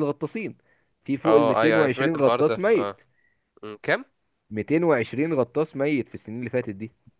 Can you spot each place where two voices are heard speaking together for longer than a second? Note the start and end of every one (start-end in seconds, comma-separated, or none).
1.3-3.0